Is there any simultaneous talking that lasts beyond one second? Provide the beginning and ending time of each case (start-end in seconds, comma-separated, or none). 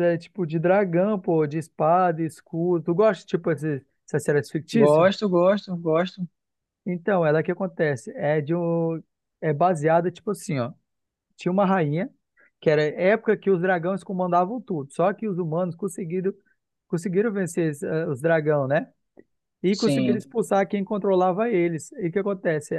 none